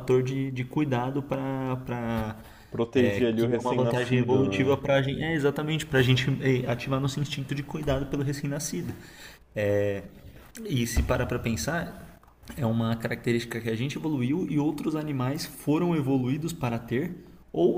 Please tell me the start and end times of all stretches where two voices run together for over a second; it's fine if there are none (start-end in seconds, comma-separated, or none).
3.0-4.8